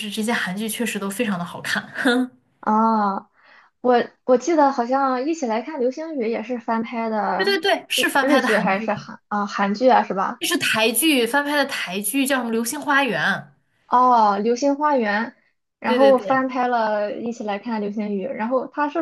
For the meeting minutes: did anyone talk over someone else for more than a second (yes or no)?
yes